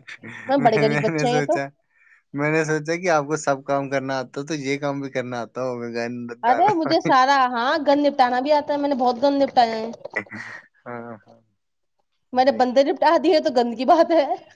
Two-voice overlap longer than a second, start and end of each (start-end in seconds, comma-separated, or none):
none